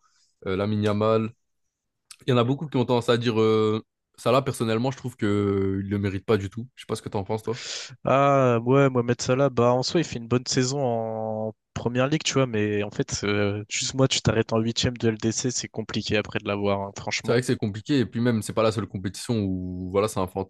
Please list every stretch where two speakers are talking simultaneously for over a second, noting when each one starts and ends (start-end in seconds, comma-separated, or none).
none